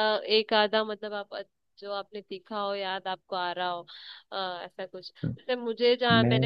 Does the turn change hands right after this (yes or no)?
no